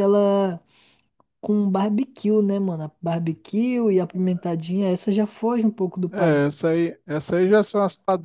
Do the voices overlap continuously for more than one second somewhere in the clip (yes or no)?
no